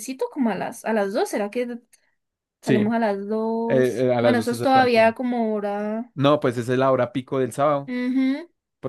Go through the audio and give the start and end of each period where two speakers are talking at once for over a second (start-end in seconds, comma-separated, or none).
3.7-5.2